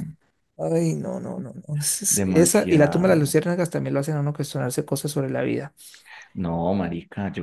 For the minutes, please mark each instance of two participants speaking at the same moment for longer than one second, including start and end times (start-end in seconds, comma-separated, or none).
2.1-3.4